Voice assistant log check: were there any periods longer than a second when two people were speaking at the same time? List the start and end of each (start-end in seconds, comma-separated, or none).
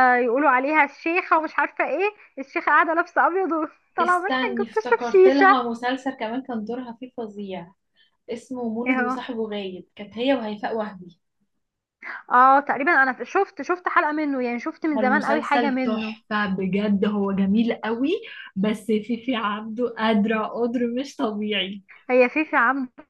4.0-5.7, 14.9-16.1